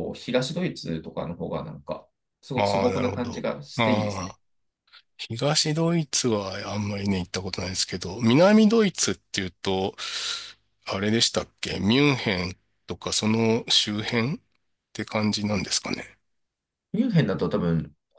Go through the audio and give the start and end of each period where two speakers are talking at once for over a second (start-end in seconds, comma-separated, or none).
2.5-4.3